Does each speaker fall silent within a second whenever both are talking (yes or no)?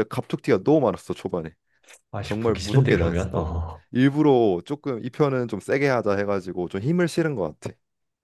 no